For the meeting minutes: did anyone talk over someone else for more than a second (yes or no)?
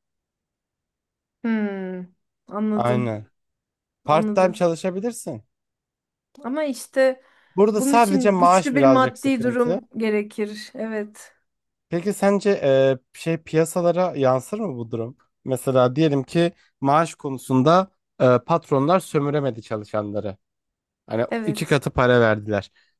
yes